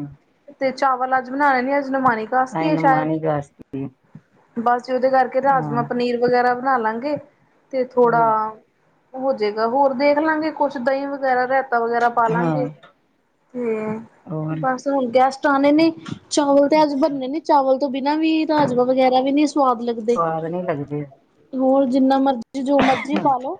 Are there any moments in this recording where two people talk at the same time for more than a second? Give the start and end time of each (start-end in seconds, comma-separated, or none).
none